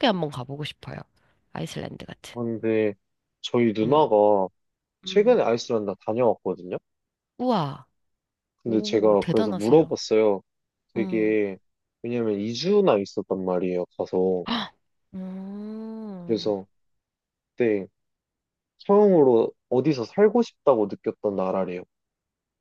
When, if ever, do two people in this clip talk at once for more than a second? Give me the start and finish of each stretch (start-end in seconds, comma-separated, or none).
8.7-10.0